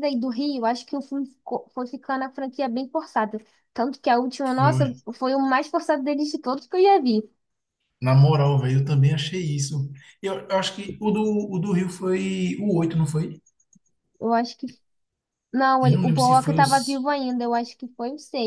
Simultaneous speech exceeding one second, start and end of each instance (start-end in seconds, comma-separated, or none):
15.8-17.1